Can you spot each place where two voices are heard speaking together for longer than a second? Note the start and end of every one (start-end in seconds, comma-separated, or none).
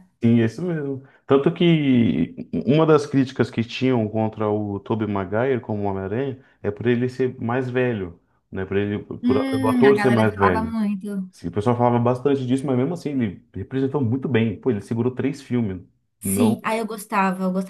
9.2-10.8